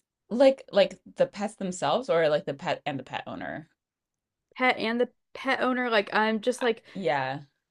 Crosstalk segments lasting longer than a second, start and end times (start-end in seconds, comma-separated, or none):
none